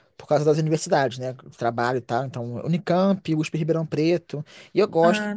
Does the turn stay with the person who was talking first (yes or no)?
yes